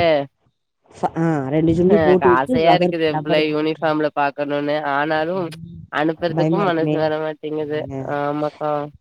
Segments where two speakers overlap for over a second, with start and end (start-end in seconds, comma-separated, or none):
1.9-3.9